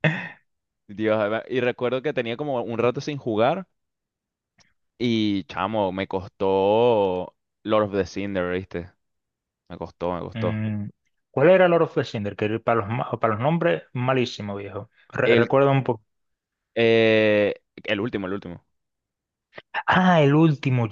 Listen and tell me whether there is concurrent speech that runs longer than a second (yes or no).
no